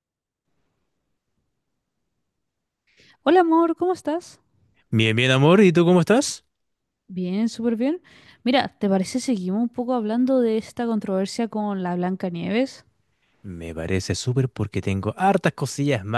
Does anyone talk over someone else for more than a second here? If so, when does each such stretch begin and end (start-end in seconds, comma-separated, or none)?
none